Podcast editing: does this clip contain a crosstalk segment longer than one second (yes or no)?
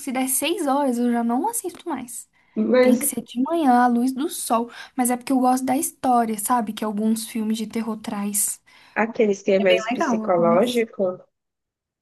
yes